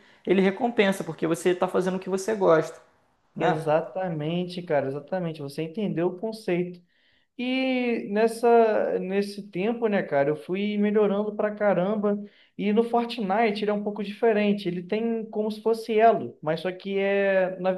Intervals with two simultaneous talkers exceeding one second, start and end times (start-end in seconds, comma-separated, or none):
none